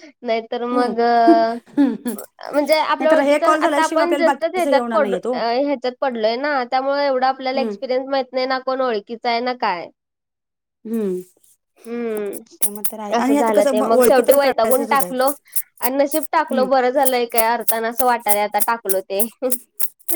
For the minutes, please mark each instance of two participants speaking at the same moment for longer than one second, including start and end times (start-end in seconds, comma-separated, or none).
3.0-5.3, 13.2-15.3